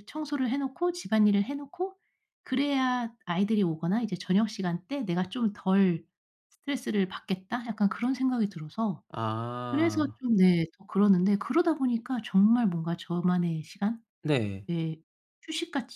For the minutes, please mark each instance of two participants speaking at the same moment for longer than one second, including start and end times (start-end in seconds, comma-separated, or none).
none